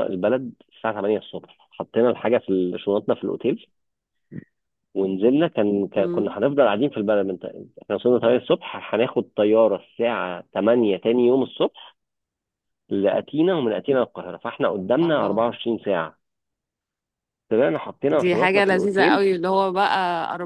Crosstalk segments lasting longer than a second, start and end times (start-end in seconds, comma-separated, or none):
18.1-19.3